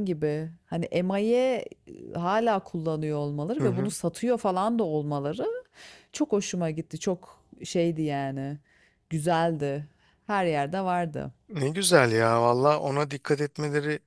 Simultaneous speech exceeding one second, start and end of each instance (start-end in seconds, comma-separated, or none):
none